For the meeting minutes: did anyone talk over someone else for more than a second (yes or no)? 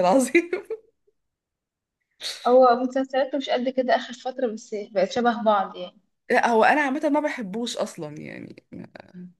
no